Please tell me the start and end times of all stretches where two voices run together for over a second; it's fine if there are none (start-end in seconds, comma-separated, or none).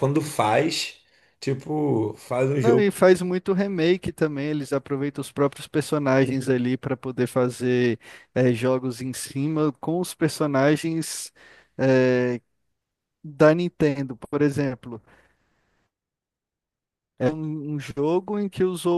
none